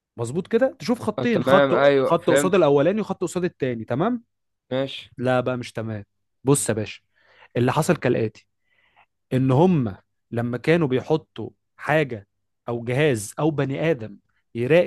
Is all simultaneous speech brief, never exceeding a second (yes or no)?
no